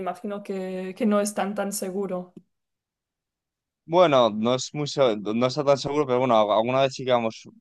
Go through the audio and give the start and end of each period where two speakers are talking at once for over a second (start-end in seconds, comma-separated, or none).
none